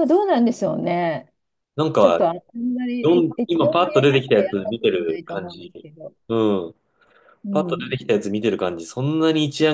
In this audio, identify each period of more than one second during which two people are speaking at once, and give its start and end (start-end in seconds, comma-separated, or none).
3.0-5.7